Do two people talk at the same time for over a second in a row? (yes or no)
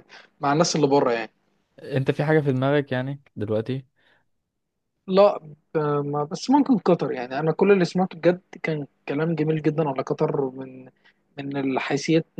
no